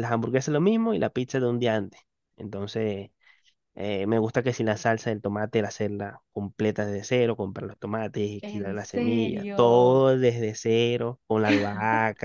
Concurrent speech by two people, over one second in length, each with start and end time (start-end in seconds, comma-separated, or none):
8.4-10.1